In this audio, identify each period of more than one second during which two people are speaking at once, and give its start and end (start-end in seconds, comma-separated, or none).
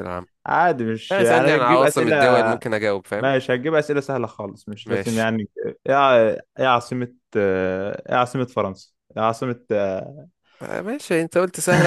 1.1-2.5